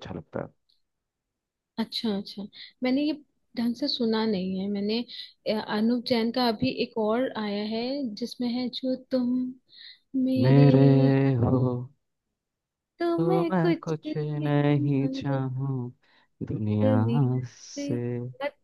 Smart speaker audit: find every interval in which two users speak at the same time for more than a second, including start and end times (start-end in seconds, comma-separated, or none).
13.2-15.4